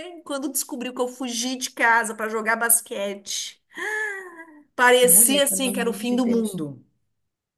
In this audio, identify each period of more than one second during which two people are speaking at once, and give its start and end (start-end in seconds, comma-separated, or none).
5.0-6.6